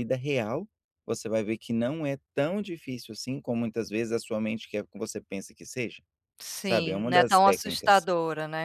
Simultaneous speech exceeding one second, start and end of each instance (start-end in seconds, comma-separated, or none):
6.6-8.1